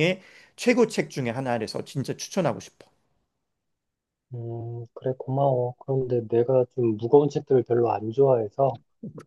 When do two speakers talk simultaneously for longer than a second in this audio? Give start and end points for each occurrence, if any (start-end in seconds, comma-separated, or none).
none